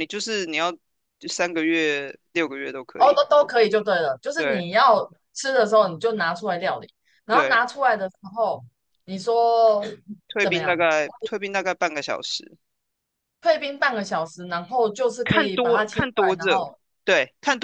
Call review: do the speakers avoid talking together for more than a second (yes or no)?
no